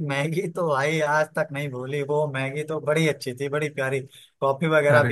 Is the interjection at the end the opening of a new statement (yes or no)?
no